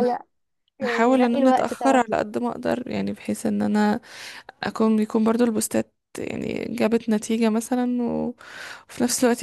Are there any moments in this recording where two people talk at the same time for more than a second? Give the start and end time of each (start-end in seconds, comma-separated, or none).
0.8-2.1